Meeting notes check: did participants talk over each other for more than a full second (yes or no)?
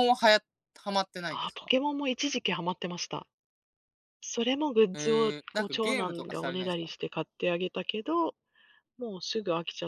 yes